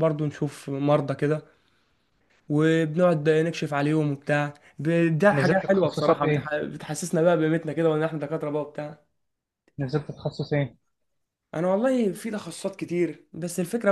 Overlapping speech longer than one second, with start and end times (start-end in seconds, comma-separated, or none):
5.3-6.5